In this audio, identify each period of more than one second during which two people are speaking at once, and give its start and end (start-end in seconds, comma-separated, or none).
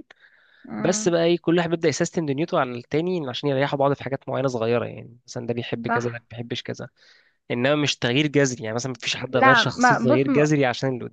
9.3-10.5